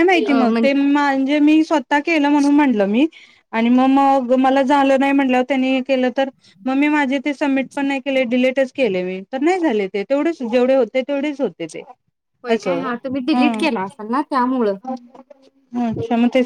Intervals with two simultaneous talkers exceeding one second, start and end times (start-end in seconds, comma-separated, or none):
none